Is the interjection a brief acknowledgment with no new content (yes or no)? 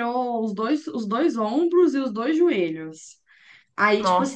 yes